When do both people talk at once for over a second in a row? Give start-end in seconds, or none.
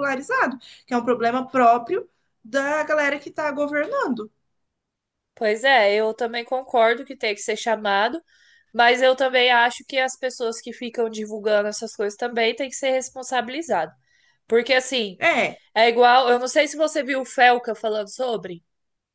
none